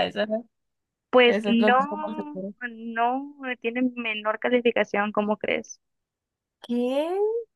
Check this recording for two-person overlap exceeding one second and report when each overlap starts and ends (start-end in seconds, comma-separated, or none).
1.2-2.5